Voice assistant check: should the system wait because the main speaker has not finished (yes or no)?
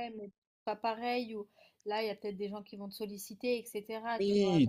no